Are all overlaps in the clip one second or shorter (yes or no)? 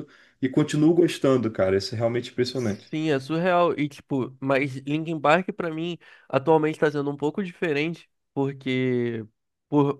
yes